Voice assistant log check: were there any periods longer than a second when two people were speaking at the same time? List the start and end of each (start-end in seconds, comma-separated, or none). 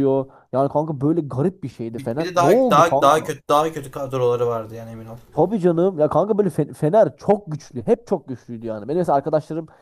1.9-3.3